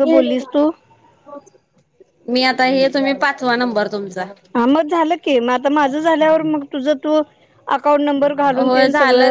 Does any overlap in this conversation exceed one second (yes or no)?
no